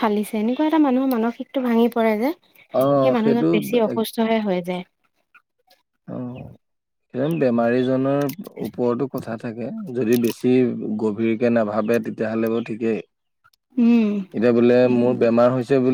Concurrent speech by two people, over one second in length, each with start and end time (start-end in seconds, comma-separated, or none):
none